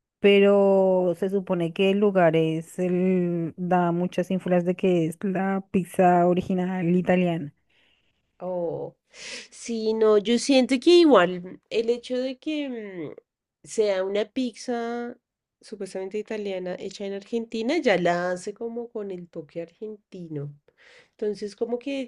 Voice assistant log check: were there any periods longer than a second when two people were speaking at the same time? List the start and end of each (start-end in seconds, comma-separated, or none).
none